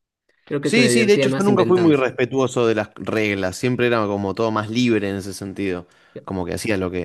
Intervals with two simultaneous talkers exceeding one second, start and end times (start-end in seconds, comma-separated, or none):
0.6-2.0